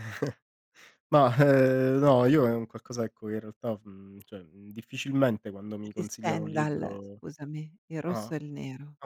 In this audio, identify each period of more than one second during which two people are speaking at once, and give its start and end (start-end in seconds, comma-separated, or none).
5.8-7.2